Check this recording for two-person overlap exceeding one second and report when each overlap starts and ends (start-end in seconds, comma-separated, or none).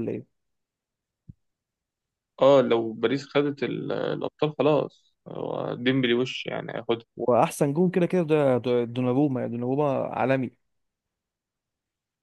none